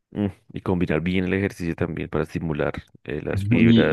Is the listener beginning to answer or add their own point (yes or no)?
yes